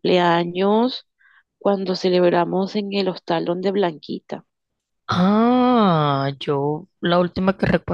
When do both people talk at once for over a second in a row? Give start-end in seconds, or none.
none